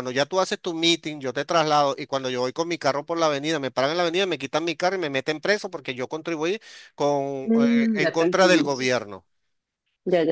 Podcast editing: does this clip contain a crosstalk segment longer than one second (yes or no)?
yes